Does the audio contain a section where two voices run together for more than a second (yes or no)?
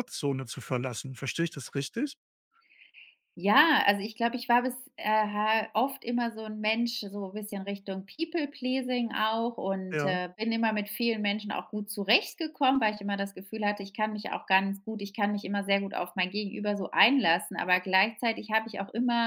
no